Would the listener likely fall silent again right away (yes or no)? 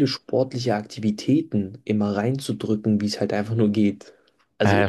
no